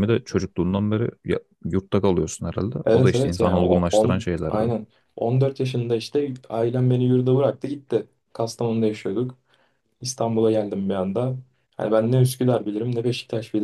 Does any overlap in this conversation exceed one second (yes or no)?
yes